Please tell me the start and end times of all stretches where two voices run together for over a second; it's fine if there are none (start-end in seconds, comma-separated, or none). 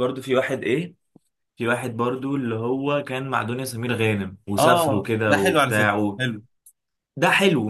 4.6-6.0